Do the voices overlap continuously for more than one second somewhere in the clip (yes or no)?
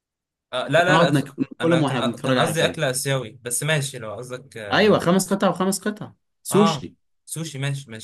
yes